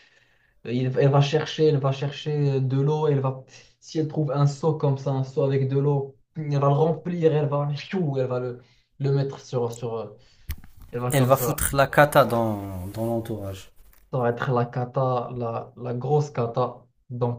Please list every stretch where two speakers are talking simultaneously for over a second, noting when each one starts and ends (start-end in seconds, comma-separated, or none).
none